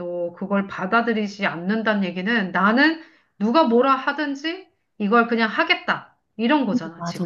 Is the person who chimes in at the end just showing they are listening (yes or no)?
no